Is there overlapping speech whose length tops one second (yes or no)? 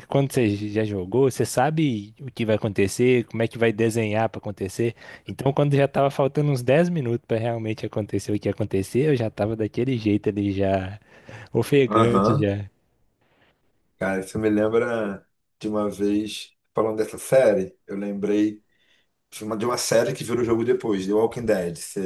no